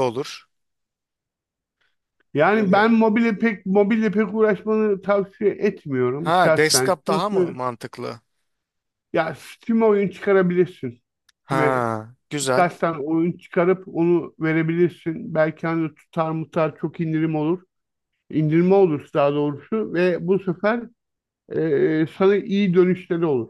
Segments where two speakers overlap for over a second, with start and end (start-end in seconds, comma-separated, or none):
6.2-7.6